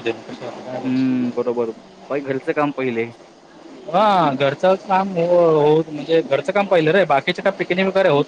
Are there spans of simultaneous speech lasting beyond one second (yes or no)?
no